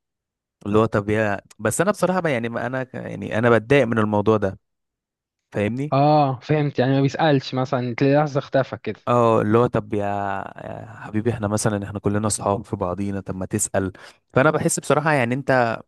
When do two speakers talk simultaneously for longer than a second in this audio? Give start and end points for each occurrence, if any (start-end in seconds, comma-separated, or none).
none